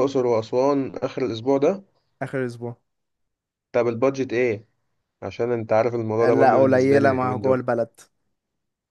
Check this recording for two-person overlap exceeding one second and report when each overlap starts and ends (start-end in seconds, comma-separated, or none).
6.2-7.6